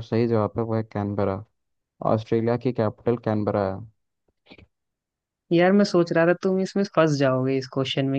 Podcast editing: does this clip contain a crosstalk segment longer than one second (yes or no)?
no